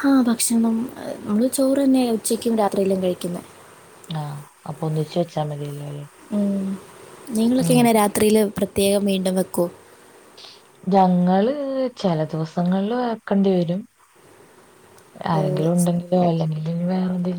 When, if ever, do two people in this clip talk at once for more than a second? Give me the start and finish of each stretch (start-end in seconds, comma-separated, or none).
none